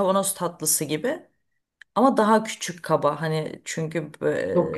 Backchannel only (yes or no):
yes